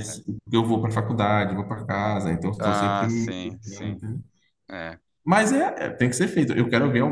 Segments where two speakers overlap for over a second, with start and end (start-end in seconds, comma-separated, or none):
2.6-4.0